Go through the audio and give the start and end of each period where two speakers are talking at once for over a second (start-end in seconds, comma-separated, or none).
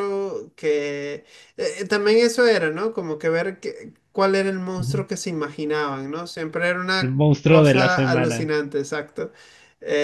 7.0-8.5